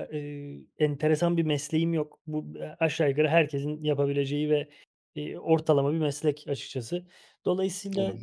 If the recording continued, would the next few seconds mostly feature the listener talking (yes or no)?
no